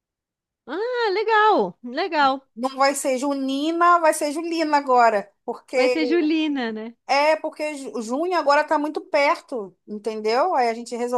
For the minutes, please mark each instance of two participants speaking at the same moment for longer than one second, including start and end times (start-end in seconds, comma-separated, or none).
none